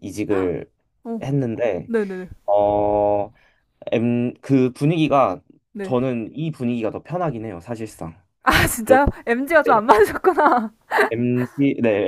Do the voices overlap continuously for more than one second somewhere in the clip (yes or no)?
no